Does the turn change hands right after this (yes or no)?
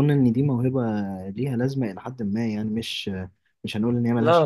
yes